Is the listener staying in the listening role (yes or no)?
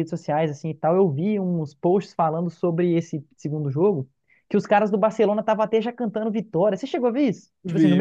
no